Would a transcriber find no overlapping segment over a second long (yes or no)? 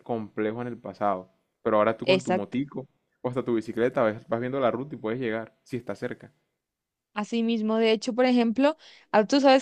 yes